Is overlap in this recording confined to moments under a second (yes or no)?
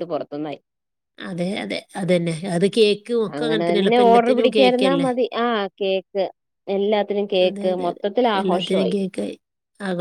no